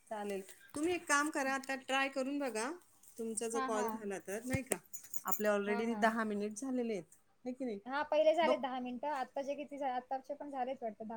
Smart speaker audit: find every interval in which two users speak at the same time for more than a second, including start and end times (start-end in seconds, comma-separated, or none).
none